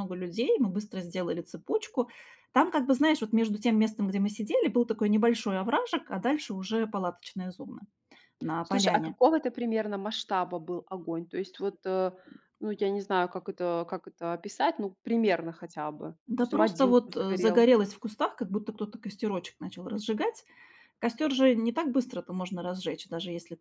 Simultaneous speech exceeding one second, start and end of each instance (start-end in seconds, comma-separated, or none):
16.3-17.6